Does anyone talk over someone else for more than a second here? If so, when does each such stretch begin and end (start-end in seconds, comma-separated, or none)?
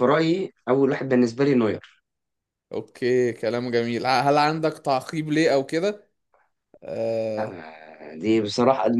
none